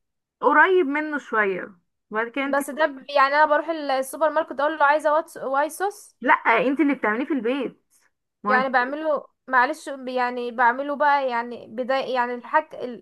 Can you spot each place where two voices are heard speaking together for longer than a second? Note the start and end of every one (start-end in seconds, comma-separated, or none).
none